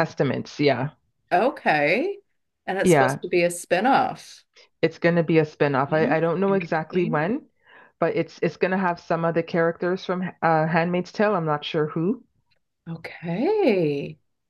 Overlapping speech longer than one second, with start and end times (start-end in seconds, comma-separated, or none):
5.9-7.3